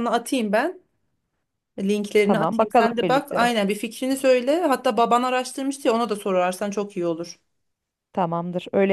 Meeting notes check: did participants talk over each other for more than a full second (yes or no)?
yes